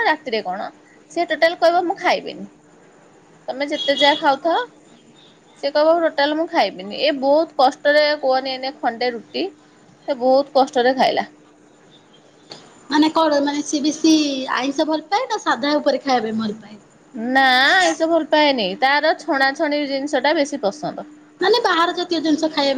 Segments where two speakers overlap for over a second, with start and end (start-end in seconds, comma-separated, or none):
none